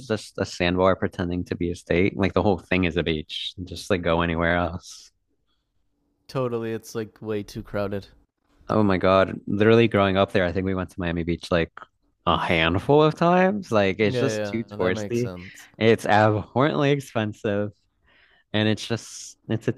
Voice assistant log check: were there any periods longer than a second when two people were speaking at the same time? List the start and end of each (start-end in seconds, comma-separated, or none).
14.0-15.3